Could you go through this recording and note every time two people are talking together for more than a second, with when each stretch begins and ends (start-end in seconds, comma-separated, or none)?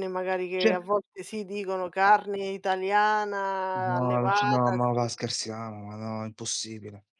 3.7-5.1